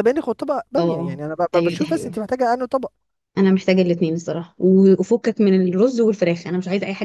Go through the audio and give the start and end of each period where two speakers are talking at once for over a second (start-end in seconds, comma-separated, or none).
0.8-2.1